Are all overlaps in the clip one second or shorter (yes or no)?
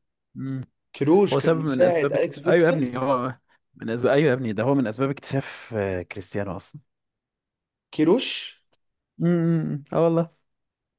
no